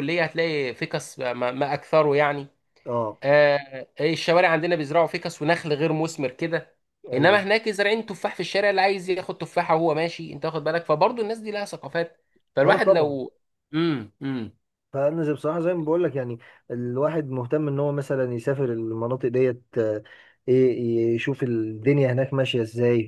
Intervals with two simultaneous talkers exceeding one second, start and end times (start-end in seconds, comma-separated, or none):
none